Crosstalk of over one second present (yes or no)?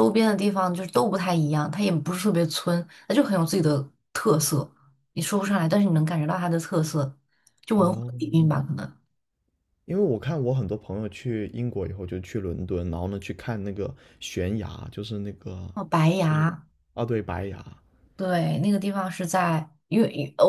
no